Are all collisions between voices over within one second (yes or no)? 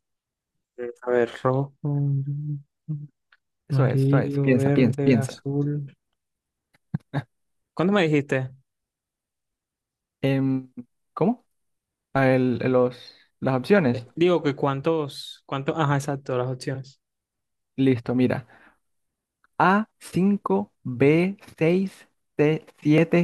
no